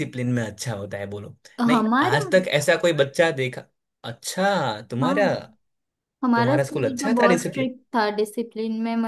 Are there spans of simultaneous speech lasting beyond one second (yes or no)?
yes